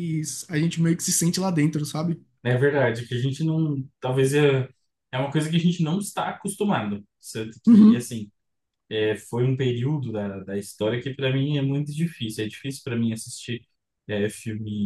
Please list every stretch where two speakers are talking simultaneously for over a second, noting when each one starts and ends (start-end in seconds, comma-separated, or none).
none